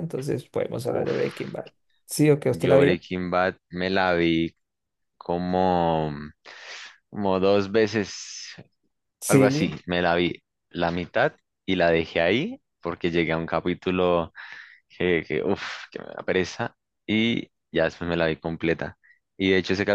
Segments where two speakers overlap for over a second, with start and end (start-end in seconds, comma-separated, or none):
none